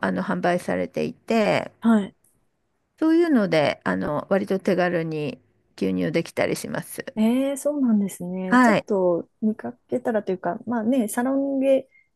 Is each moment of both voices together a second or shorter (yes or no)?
yes